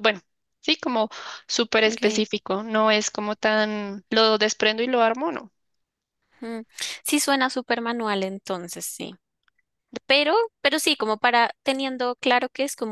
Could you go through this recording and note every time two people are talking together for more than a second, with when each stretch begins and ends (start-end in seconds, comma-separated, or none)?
none